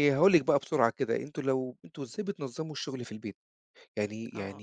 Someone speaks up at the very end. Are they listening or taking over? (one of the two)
listening